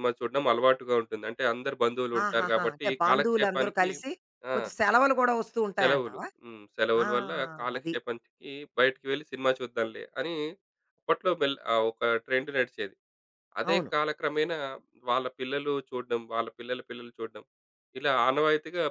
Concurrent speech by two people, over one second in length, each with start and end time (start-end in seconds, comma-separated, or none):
2.2-3.9